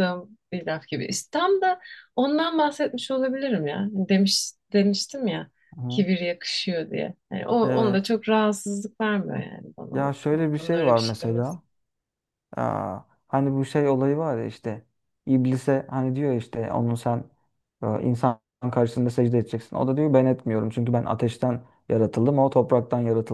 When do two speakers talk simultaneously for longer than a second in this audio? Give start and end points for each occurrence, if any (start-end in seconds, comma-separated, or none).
9.9-11.6